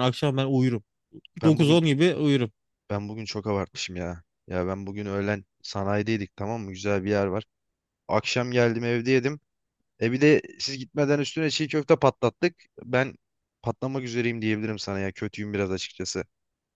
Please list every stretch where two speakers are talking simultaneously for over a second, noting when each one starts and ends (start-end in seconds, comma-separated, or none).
none